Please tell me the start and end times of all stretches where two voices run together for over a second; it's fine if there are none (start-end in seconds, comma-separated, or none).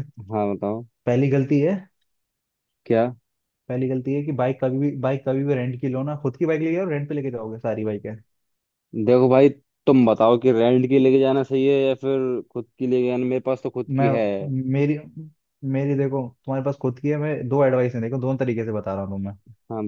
none